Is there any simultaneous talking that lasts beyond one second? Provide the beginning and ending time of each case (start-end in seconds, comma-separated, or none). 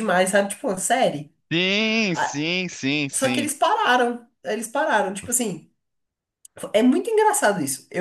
none